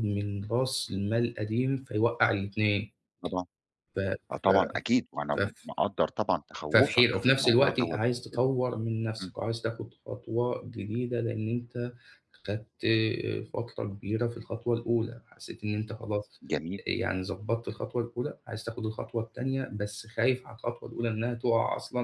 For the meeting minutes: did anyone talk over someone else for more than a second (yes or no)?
yes